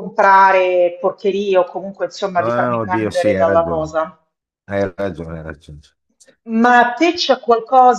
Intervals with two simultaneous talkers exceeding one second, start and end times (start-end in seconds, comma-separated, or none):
2.4-4.1